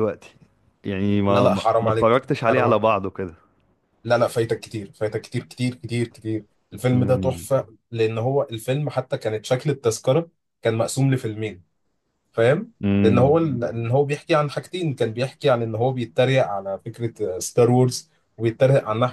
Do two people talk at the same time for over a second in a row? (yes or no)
yes